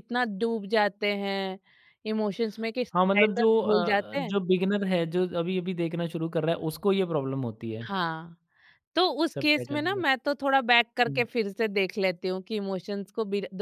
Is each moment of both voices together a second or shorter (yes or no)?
no